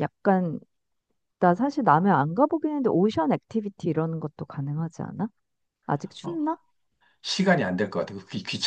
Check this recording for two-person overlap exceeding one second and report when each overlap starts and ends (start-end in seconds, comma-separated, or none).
none